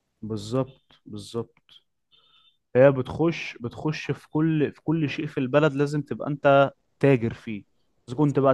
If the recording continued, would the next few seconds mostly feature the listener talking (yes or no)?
no